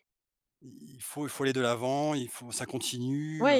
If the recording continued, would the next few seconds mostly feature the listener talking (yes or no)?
yes